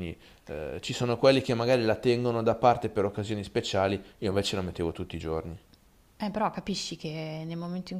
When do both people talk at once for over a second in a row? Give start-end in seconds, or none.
none